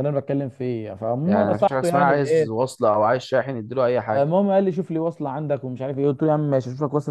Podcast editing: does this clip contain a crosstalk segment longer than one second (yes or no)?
yes